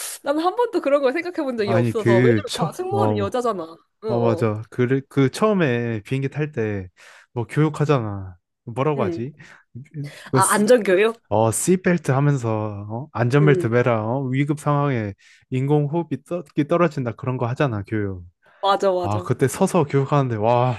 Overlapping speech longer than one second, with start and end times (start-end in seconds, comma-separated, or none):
1.6-3.3